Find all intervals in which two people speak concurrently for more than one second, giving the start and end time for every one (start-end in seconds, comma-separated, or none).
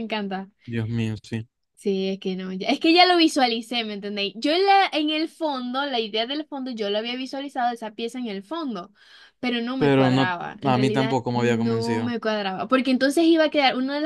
9.8-12.2